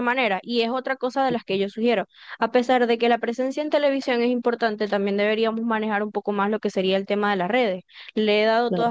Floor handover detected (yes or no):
no